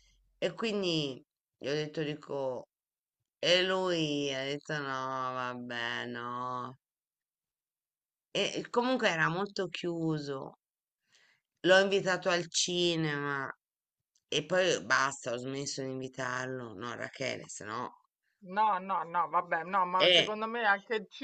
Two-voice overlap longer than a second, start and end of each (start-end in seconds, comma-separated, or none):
none